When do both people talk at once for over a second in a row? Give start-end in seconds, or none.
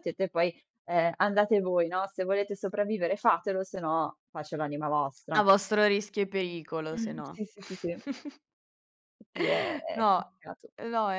none